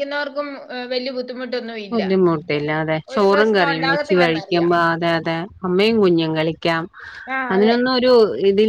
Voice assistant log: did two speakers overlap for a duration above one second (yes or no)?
yes